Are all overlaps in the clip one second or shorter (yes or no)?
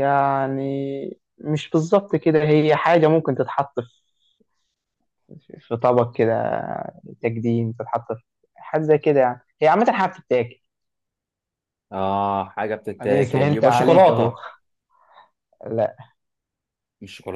no